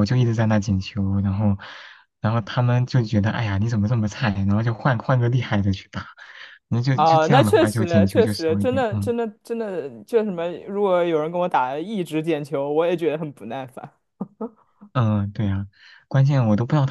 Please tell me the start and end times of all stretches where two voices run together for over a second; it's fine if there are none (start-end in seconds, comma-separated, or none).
6.9-9.1